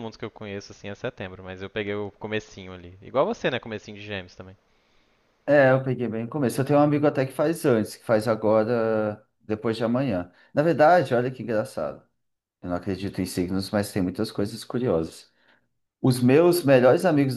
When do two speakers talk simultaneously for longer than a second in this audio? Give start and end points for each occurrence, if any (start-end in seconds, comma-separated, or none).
none